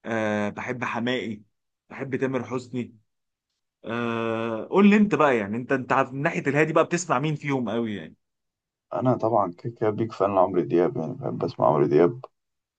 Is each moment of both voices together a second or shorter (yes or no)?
yes